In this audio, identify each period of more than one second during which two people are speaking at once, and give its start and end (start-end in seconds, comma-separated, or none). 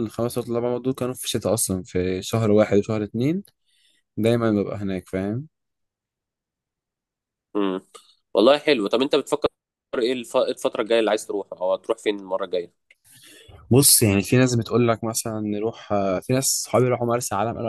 none